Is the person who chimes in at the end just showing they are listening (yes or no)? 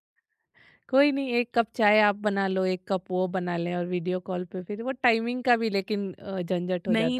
no